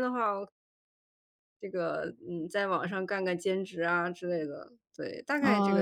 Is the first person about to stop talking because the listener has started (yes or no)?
yes